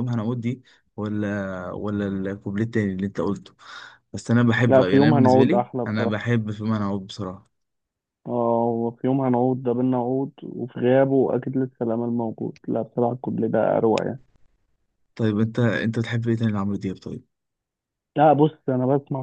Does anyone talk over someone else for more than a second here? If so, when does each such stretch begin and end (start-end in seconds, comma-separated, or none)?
4.7-6.2